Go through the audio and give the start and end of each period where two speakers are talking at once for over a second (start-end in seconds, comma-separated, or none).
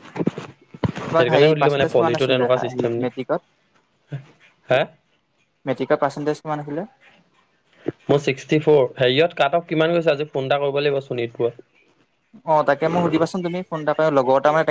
1.1-3.0